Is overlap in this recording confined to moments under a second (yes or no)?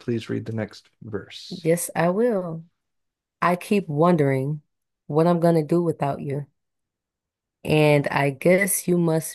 yes